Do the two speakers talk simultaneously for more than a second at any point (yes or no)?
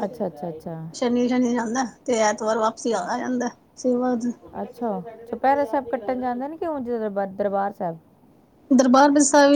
no